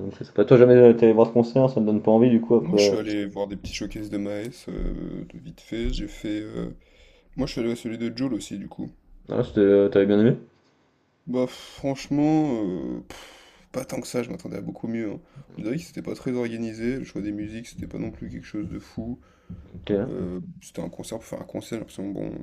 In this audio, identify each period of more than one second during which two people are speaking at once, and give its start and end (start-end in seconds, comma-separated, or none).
none